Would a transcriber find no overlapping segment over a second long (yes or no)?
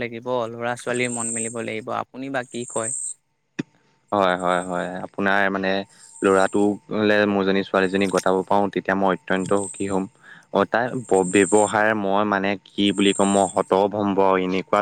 yes